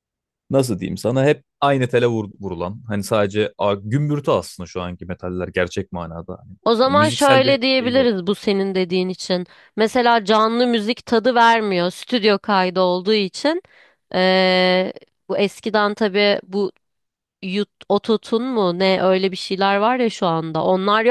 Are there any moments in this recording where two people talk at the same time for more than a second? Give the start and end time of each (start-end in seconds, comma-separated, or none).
6.6-8.2